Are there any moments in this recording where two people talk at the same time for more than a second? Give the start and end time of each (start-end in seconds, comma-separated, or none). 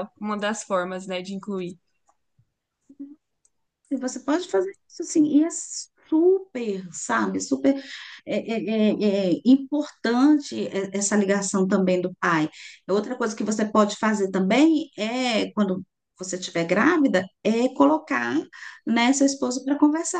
none